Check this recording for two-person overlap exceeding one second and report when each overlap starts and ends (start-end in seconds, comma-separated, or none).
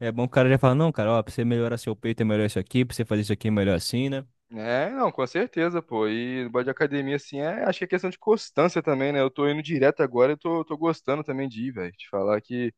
none